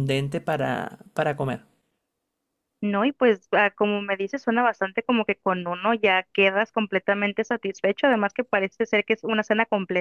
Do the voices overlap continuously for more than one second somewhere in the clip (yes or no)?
no